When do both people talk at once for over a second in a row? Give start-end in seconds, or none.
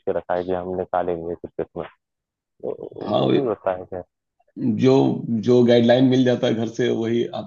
none